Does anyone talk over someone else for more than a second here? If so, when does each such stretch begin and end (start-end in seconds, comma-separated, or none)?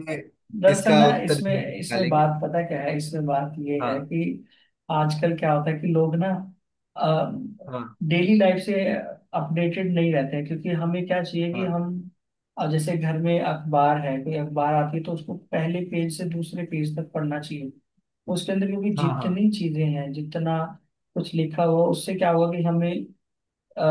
0.7-2.4